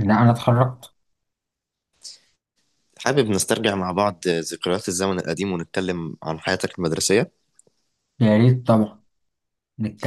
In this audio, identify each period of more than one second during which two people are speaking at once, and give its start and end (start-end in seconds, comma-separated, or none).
none